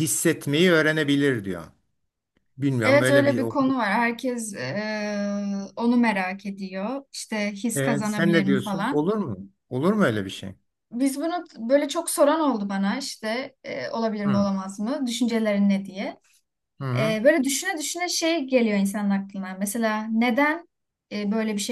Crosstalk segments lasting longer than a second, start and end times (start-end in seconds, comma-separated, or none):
7.8-9.1